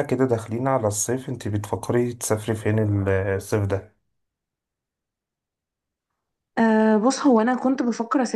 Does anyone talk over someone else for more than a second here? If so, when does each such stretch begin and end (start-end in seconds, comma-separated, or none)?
none